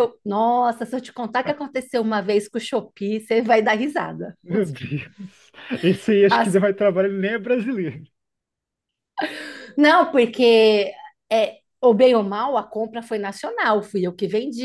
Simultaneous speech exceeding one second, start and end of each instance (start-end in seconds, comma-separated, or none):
none